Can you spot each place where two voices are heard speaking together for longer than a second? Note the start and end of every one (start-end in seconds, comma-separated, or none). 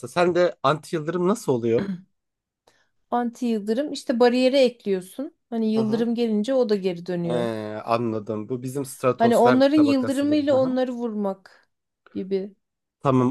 9.2-10.7